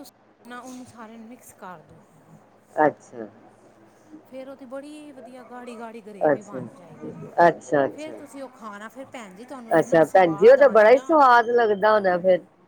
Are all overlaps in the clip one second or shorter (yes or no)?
no